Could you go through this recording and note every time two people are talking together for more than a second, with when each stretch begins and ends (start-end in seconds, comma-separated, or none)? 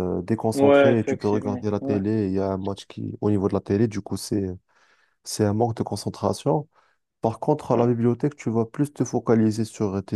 0.5-2.0